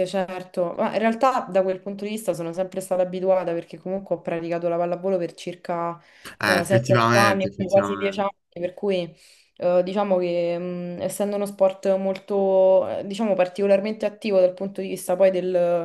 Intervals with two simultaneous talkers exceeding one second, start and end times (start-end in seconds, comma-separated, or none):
6.4-8.3